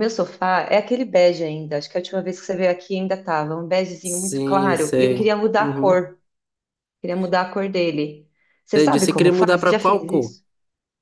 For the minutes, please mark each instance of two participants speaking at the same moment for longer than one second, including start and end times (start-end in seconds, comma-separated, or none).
4.0-6.0, 8.7-10.3